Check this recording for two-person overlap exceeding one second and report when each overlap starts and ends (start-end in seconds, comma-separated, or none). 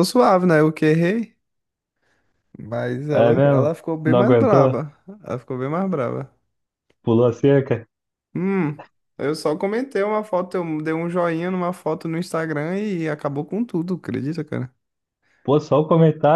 3.1-4.8